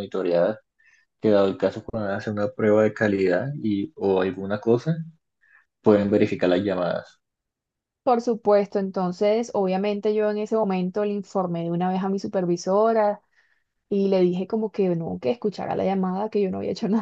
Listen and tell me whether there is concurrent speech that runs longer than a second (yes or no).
no